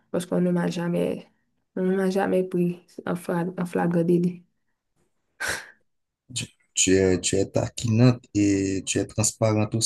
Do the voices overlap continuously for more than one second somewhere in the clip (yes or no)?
no